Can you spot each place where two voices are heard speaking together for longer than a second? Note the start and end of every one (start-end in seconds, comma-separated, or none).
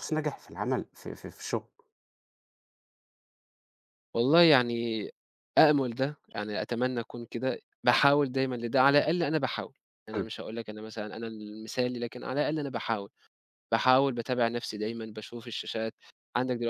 none